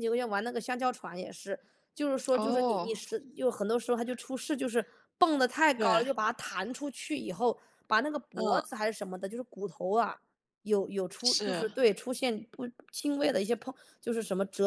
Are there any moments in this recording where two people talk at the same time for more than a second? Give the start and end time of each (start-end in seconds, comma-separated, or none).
none